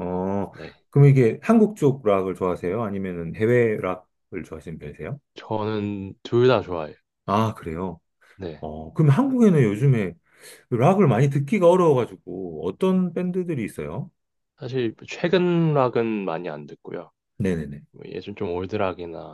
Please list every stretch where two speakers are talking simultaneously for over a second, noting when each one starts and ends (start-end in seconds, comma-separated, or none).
none